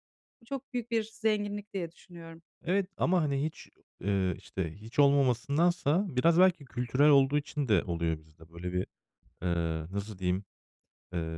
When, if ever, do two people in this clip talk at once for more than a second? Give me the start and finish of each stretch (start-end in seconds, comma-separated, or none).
none